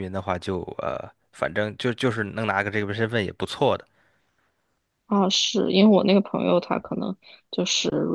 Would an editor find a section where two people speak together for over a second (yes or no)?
no